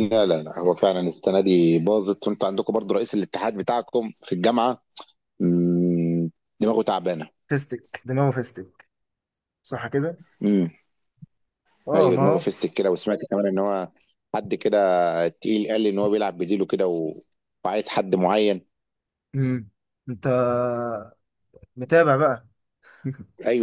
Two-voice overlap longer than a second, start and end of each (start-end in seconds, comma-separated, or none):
none